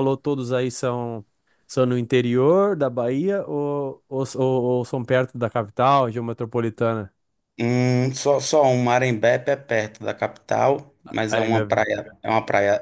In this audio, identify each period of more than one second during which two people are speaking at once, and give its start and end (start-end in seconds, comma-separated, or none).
none